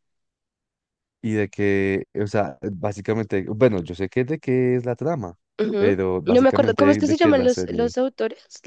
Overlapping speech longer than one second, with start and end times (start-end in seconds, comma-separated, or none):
5.8-7.9